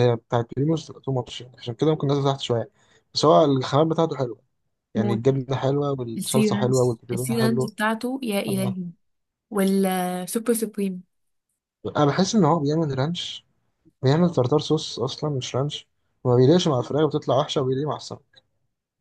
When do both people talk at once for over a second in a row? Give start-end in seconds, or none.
6.2-7.7